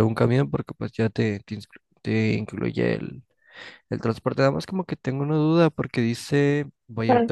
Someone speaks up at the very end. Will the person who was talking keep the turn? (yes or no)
yes